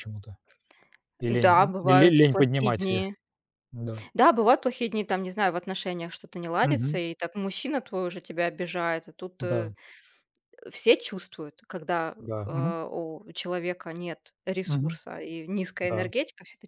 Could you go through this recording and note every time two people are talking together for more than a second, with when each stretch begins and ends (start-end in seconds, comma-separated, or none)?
1.4-3.0